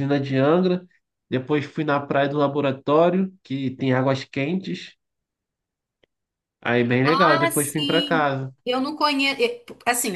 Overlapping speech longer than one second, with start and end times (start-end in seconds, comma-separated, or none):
7.0-8.5